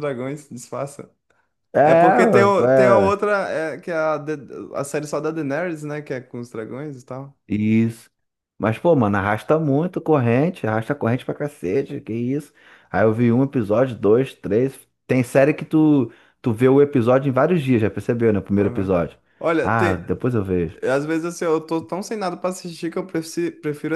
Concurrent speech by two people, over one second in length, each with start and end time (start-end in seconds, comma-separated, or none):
1.8-3.1